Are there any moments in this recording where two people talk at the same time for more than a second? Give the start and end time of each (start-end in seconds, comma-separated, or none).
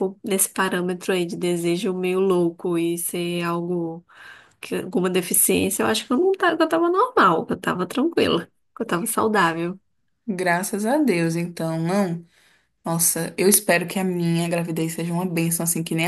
none